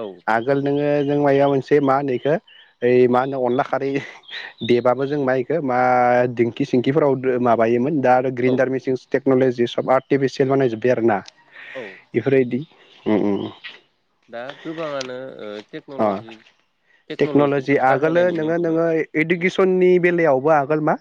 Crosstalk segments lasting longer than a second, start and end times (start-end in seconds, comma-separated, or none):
17.2-18.8